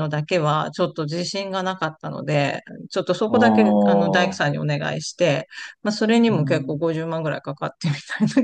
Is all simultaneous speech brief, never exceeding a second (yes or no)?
no